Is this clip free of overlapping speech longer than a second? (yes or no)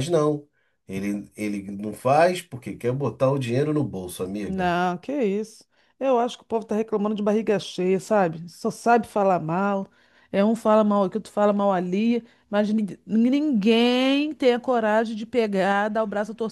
yes